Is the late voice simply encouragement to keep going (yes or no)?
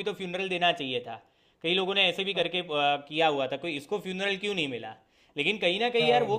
yes